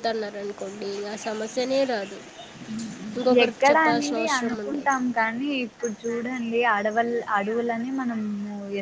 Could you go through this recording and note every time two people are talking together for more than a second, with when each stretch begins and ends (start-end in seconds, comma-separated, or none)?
3.4-5.0